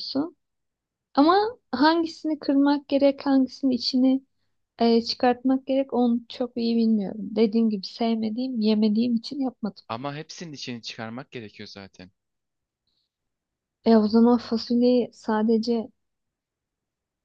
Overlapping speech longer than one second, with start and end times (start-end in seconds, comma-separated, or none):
none